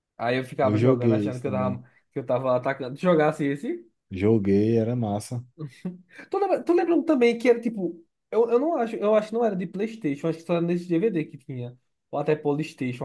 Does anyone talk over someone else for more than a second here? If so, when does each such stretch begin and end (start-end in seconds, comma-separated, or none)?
0.6-1.8